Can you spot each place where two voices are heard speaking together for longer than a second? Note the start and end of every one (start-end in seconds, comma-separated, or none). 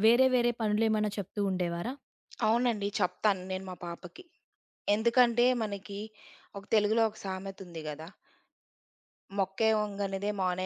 none